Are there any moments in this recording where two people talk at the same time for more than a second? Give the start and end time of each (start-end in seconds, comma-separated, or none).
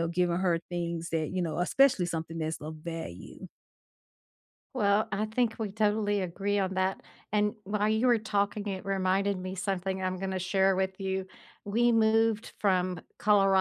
none